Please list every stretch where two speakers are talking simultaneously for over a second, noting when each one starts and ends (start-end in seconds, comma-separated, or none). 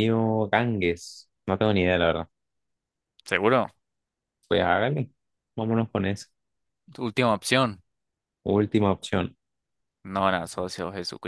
none